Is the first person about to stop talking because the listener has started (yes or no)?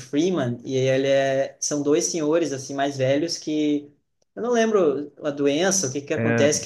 no